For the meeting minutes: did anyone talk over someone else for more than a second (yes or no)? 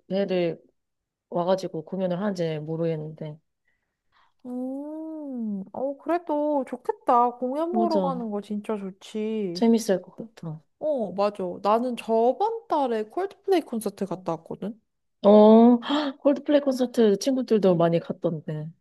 no